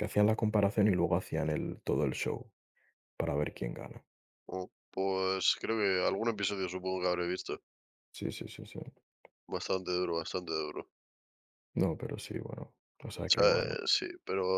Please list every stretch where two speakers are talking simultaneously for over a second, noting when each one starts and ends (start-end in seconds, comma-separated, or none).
none